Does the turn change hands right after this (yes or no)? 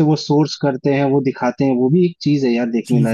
yes